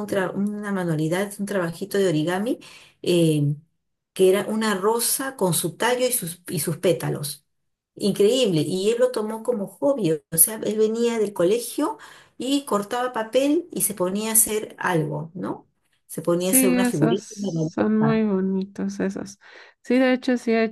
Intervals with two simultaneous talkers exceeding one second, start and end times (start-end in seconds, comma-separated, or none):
16.4-18.3